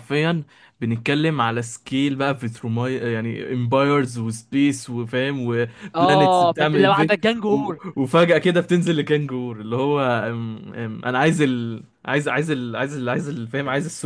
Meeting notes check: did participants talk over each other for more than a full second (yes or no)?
yes